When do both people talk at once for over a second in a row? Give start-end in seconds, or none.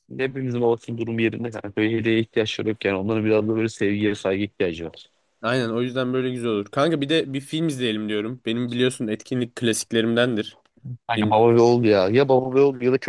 none